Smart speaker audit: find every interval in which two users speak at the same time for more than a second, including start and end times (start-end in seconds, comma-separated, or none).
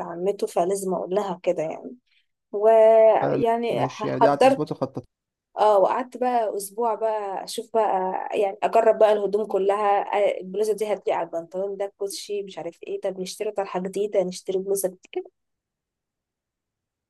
3.2-4.7